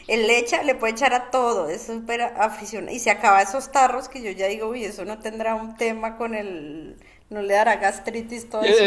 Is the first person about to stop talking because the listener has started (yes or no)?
yes